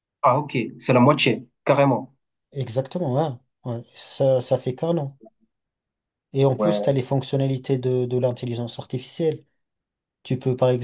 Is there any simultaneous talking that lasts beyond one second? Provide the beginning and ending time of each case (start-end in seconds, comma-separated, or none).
none